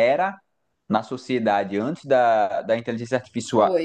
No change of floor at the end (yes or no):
yes